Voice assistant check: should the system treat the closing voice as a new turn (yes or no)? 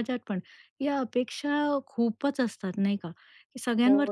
no